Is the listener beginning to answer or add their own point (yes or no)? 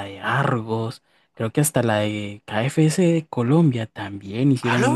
no